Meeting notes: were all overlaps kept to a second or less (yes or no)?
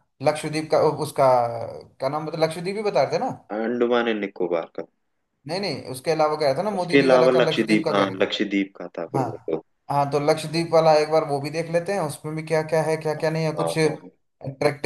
no